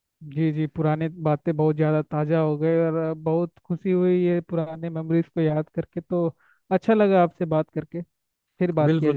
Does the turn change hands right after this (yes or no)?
yes